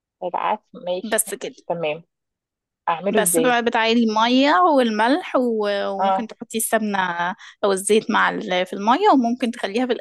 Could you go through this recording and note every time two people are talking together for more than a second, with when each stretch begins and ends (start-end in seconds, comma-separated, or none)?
none